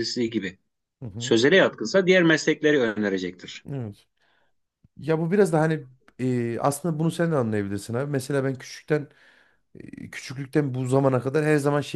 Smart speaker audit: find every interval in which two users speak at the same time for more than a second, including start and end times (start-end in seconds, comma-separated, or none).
none